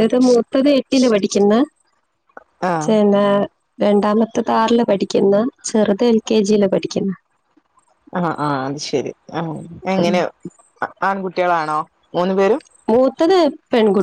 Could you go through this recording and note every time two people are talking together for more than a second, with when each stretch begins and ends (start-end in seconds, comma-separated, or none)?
none